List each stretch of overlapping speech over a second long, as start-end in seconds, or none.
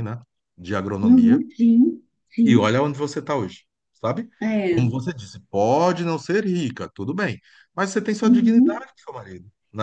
none